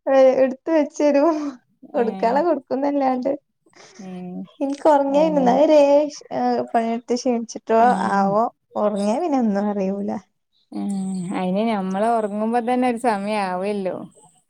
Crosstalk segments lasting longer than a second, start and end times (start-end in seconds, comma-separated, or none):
none